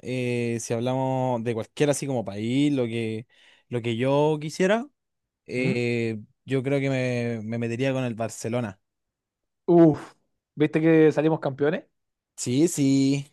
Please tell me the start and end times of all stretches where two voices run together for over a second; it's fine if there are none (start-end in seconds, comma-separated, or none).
none